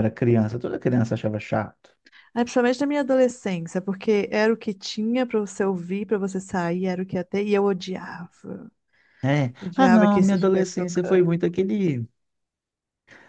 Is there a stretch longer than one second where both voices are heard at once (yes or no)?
yes